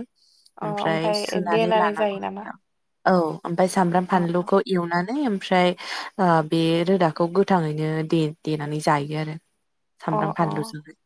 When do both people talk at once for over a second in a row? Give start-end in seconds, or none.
0.7-2.5